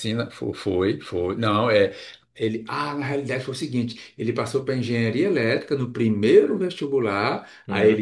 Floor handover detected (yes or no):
no